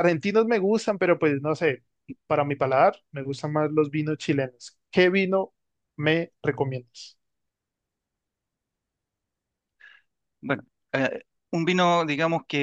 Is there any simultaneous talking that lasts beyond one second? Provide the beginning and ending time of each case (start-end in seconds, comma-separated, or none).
none